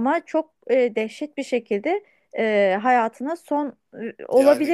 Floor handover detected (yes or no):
yes